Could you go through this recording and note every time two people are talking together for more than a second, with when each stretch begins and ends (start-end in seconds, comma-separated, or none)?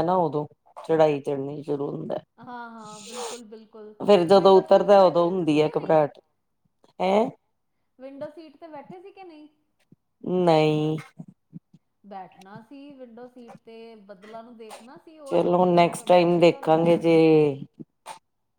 4.4-6.0